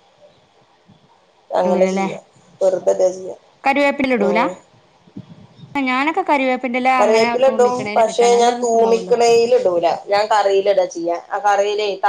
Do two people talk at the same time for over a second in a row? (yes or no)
no